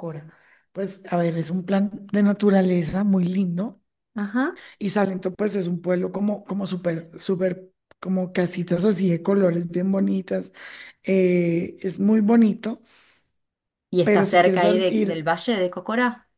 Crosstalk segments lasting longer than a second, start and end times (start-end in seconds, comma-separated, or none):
14.0-15.3